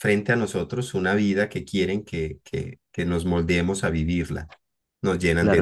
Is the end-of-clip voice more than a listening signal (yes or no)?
yes